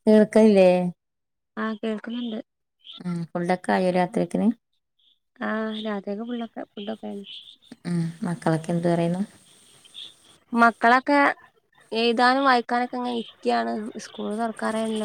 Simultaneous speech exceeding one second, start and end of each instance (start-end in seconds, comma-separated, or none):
none